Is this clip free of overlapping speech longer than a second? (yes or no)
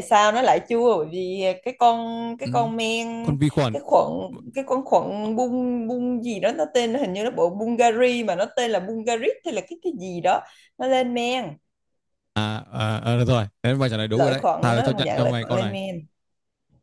no